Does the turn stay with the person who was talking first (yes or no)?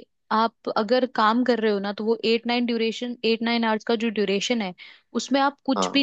yes